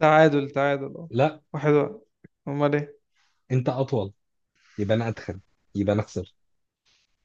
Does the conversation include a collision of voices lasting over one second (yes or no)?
no